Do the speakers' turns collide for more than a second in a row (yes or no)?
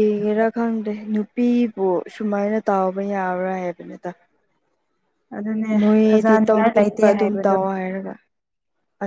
yes